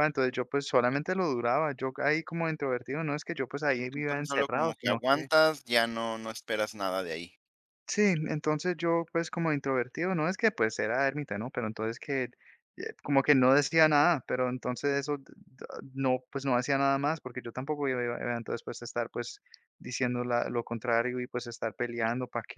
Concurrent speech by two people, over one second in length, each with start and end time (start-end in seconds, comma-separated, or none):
3.9-5.3